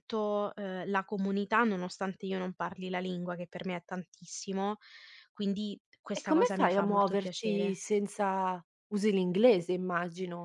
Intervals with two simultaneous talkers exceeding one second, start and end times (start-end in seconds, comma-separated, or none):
6.2-7.8